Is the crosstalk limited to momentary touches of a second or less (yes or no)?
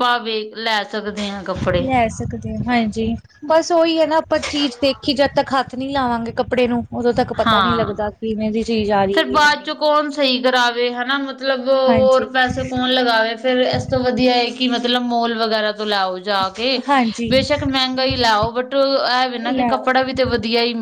yes